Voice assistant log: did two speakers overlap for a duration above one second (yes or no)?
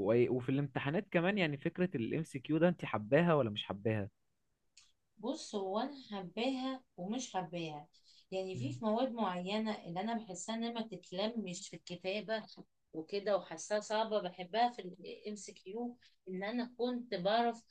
no